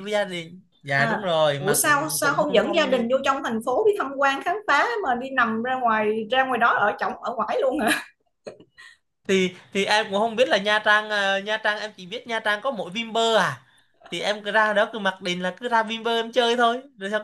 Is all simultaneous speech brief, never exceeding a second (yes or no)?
no